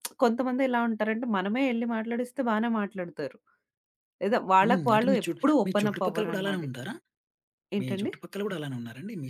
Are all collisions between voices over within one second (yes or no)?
no